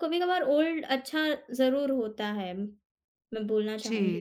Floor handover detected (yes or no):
yes